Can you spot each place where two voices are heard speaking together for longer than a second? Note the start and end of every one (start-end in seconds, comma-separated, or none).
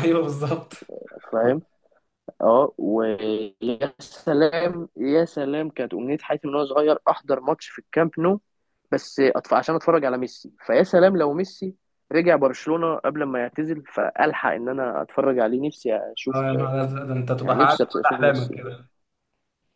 17.4-18.7